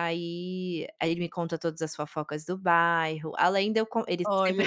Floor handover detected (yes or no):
no